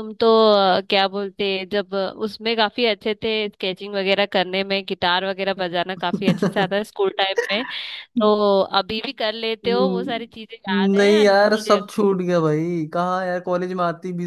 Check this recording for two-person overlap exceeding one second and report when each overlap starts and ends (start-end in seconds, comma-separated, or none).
9.7-11.8